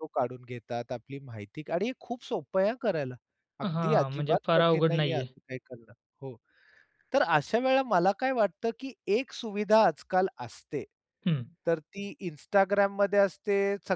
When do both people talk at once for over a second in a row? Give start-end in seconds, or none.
3.6-5.3